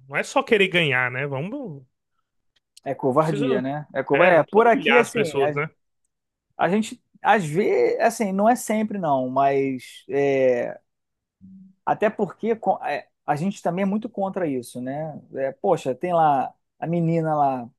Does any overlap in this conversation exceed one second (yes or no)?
yes